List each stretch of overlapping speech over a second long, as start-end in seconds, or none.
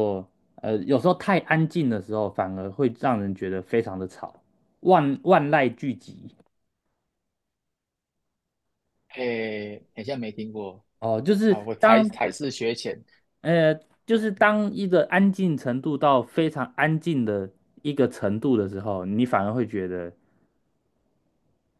none